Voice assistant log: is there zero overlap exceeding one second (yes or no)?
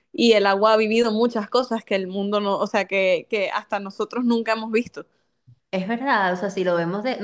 yes